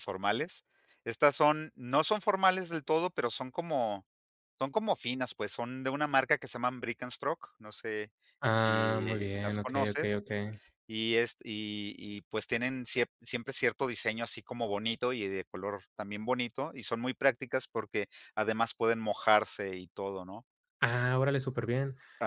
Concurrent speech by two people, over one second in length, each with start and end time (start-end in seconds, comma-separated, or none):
8.5-10.2